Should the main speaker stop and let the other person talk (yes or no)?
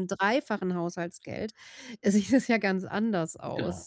yes